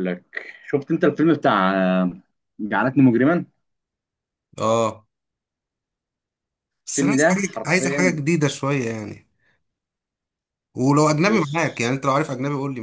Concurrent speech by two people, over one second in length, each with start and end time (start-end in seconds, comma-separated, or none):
6.9-8.2